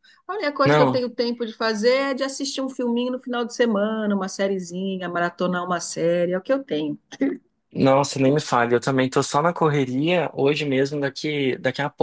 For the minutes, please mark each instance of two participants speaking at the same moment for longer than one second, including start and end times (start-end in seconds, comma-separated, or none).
none